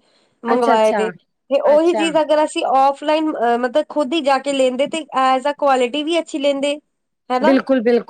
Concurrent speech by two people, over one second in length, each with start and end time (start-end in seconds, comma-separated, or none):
none